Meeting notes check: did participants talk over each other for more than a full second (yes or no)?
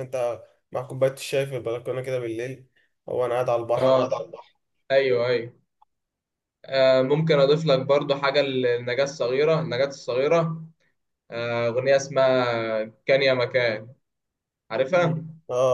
no